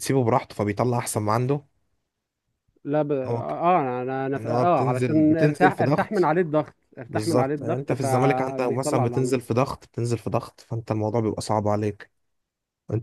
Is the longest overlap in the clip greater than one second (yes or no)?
yes